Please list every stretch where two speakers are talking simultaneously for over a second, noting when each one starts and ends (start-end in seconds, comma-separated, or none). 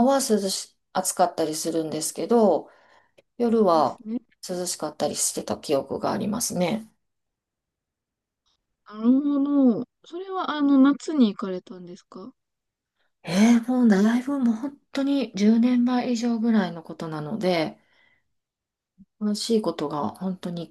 none